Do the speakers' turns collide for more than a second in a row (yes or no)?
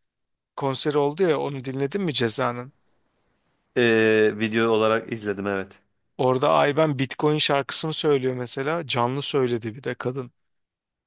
no